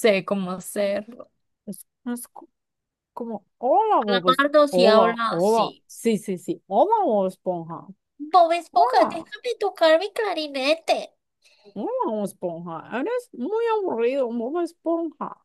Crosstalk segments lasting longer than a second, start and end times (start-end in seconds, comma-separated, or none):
4.0-5.8